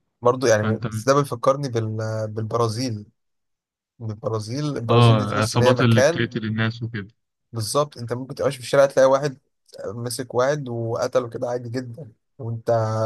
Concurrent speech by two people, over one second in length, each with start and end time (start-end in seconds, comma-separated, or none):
4.9-6.3